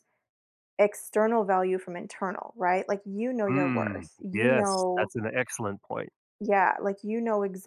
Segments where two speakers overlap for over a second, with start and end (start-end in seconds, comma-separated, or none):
3.5-5.1